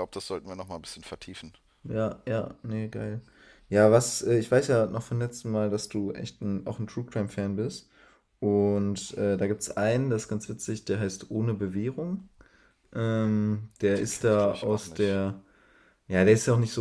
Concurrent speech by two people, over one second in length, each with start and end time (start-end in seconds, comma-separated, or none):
14.0-15.2